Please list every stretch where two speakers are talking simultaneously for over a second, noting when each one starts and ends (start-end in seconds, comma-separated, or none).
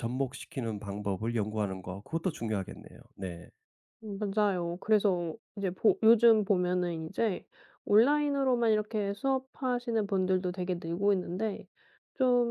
none